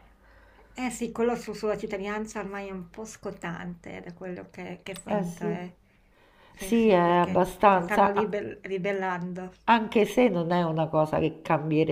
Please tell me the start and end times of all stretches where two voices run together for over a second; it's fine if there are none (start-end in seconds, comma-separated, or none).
6.5-8.4